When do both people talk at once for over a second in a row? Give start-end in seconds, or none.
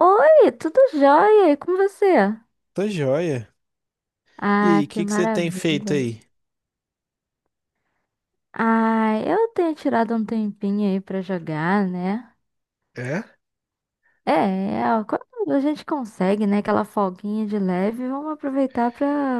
4.6-6.0